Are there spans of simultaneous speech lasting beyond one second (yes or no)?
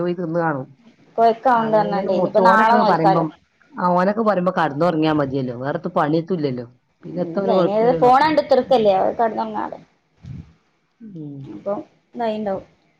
yes